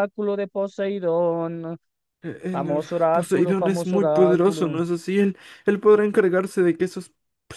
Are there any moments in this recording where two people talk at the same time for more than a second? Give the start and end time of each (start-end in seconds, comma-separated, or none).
2.5-4.8